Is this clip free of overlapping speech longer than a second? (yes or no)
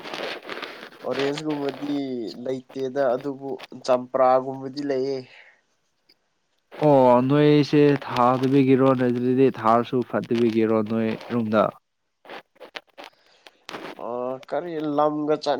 yes